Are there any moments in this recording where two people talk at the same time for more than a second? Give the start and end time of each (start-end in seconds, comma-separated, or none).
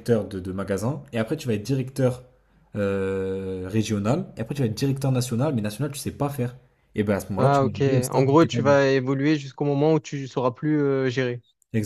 7.4-8.8